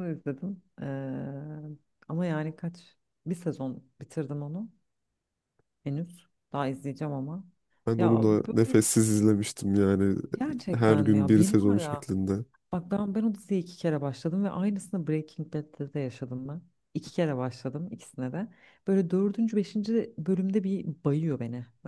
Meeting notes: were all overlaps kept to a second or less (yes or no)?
no